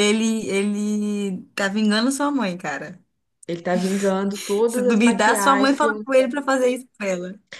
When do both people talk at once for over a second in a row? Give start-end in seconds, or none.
4.7-6.0